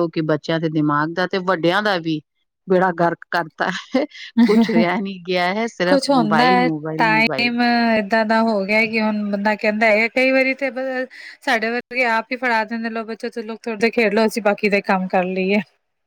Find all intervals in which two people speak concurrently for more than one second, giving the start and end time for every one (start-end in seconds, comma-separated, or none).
none